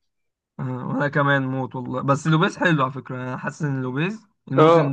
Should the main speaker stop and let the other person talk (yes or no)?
yes